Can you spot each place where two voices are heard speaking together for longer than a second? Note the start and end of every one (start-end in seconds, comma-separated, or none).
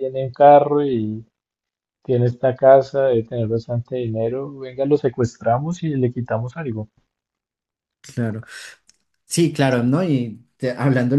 none